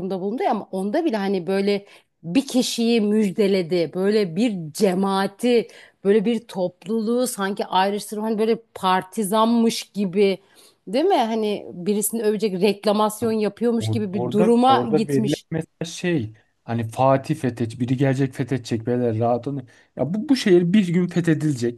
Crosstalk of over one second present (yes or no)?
yes